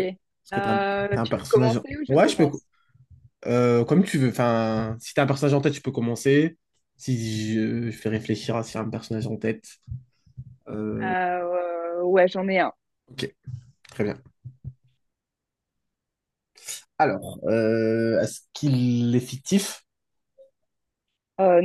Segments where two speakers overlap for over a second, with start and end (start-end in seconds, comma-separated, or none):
0.5-2.5